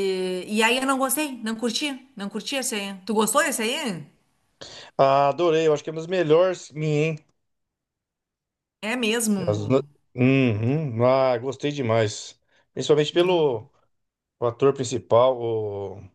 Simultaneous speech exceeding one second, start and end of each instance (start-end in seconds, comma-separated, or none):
none